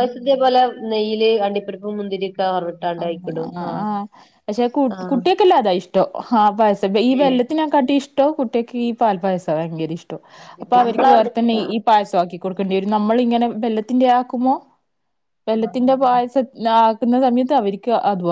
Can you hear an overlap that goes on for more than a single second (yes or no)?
yes